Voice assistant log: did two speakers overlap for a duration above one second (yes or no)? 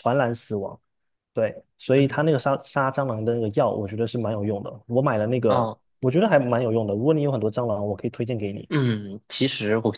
no